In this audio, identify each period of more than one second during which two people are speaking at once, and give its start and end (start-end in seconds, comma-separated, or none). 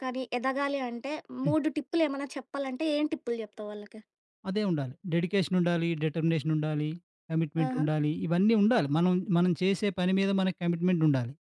none